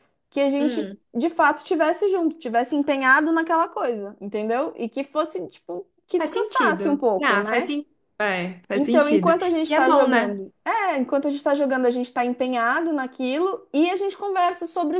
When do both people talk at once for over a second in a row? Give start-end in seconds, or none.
6.2-7.8, 8.8-10.4